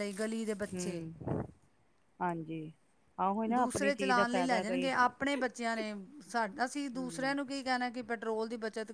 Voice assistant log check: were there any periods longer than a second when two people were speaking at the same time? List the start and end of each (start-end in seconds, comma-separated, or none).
3.5-4.9